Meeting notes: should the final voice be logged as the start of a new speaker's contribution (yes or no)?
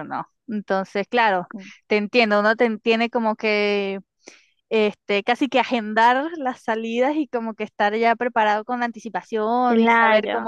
no